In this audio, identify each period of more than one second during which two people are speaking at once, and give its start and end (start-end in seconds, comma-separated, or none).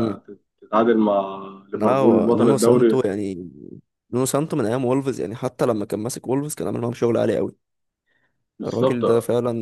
1.7-3.0